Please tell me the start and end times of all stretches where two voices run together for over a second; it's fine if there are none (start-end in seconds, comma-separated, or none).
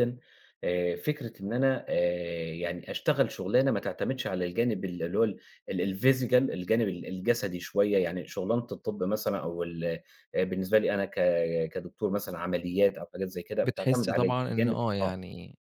13.7-15.1